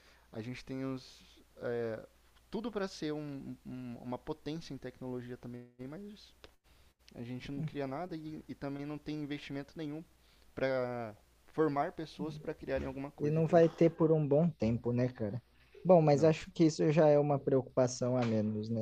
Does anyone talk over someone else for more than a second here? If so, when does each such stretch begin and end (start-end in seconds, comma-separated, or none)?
none